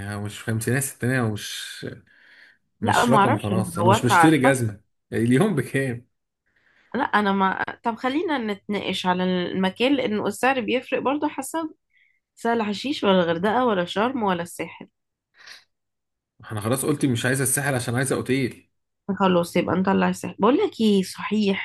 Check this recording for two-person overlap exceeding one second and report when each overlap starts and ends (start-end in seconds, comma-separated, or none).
2.8-4.6